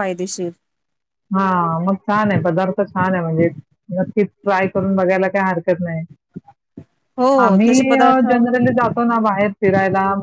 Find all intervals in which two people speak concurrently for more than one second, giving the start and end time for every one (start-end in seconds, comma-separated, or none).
none